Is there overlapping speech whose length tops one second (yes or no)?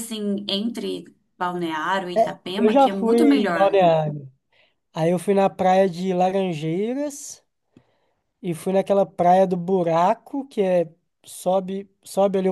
yes